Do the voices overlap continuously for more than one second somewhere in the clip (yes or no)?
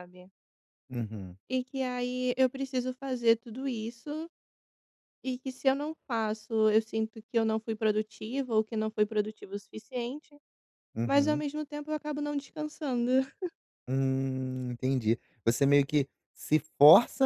no